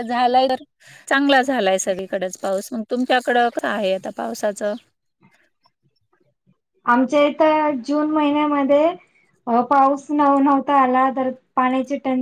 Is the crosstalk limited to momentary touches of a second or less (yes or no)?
yes